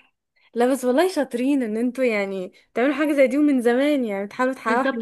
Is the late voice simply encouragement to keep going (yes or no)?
no